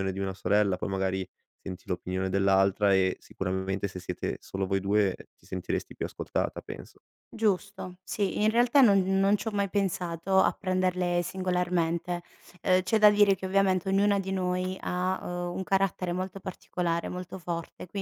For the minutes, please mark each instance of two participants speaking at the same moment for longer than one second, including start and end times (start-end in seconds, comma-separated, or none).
none